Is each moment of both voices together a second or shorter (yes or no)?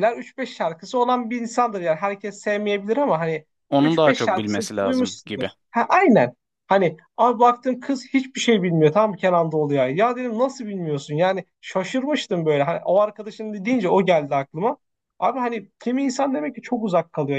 no